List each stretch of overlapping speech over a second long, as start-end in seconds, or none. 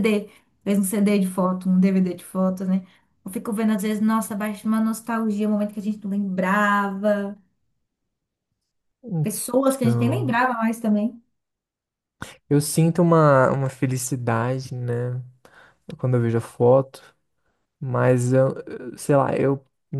none